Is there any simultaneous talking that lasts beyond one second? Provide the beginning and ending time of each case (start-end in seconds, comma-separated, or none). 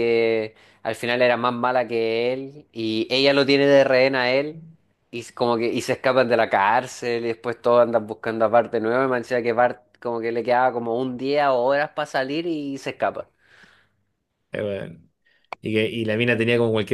none